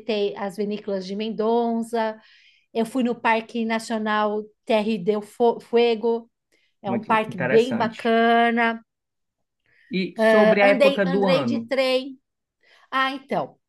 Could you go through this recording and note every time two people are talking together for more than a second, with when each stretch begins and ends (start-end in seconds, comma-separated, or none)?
6.8-8.2, 10.2-11.7